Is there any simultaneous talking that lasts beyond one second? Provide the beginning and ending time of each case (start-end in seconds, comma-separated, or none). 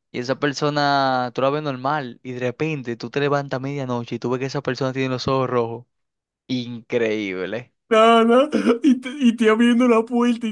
none